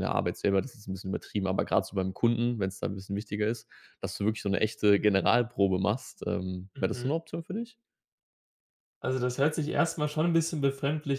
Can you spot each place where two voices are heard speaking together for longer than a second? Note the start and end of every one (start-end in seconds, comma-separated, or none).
none